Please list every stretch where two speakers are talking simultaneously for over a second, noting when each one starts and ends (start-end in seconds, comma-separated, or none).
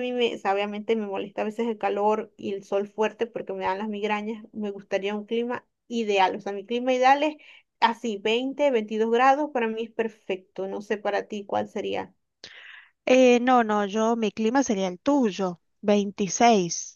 none